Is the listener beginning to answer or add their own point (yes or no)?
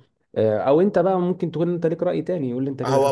yes